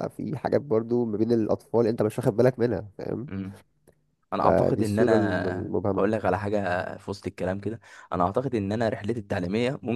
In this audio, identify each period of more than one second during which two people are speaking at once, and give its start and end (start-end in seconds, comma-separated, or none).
4.4-6.0